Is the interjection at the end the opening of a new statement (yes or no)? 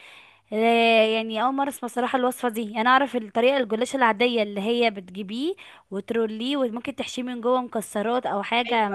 yes